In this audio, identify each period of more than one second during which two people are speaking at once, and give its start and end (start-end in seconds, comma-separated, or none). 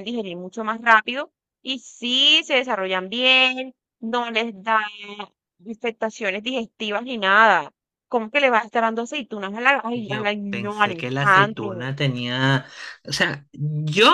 9.9-11.9